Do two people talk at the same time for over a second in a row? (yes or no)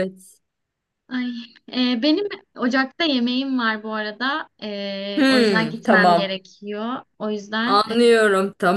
yes